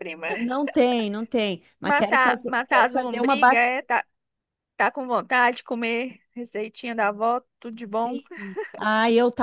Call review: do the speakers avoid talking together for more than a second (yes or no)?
no